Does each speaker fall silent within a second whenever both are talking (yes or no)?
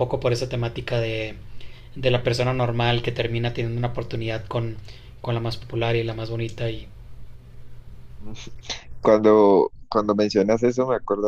yes